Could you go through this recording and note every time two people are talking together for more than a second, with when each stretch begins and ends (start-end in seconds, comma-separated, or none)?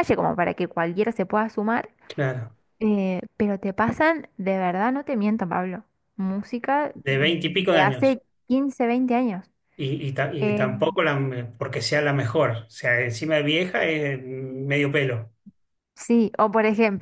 6.9-8.2